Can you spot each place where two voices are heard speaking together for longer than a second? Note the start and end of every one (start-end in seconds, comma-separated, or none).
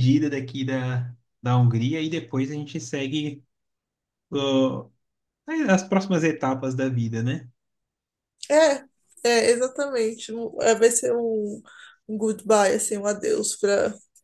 none